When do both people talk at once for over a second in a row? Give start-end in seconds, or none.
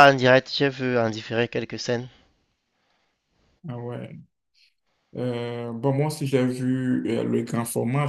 none